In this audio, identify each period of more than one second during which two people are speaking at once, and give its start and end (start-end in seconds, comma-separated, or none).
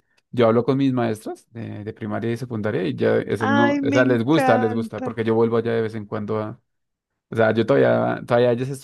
3.4-5.1